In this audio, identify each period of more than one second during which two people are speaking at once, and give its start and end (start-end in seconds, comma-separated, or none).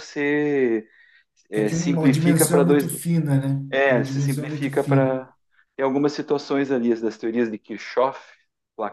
1.6-3.0, 3.7-5.2